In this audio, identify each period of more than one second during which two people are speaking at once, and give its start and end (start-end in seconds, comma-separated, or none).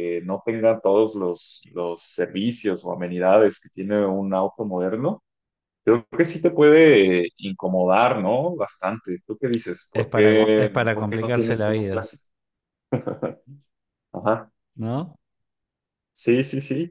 9.9-12.0